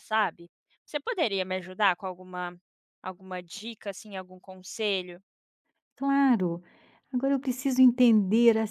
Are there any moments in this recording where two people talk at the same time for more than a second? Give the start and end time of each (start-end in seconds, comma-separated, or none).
none